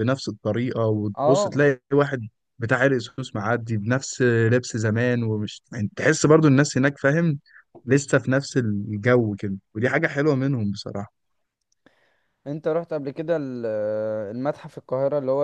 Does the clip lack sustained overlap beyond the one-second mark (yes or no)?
yes